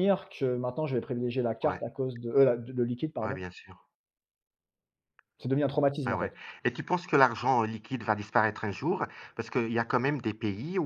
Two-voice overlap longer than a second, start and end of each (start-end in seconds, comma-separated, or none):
none